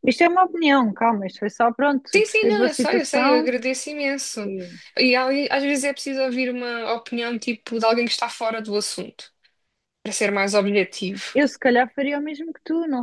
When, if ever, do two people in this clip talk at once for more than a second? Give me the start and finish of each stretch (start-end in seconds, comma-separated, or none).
2.1-3.5